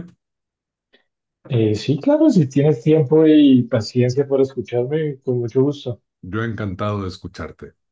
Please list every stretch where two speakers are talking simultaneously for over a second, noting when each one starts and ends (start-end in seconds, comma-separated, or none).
none